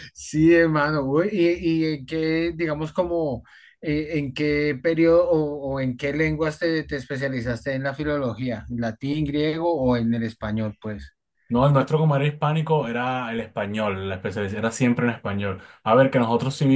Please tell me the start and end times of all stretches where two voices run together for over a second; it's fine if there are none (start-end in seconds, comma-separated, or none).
none